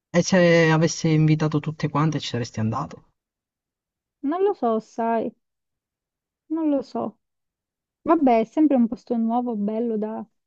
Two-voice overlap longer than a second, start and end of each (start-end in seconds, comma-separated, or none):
none